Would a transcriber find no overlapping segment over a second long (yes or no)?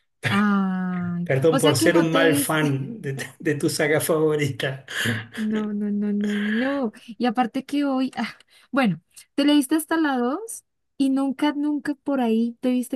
no